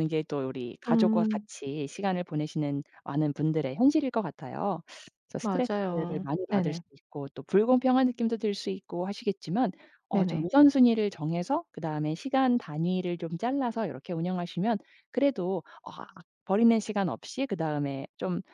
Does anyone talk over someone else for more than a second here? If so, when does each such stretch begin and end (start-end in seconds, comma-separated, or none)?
5.4-6.8